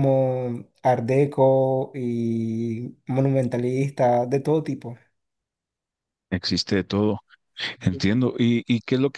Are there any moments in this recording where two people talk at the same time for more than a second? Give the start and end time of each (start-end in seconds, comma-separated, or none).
none